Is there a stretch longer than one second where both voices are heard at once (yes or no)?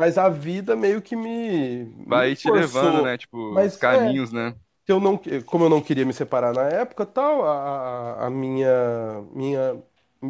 yes